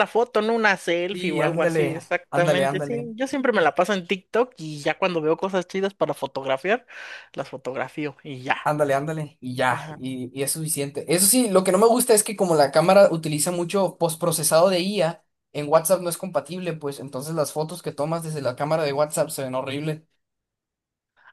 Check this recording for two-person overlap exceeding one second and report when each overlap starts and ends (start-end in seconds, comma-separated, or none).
1.1-3.1